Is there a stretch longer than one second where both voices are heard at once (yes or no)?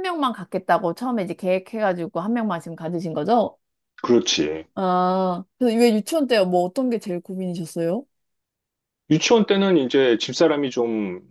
no